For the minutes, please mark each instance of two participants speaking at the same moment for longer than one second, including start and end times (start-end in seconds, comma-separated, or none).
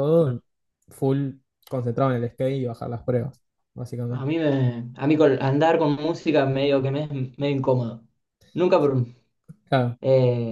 none